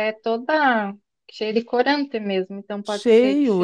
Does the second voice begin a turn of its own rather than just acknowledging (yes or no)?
yes